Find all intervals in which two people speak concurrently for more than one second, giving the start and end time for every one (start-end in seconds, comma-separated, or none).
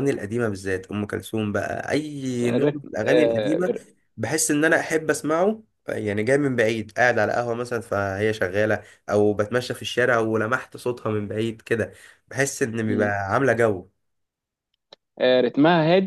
2.4-3.7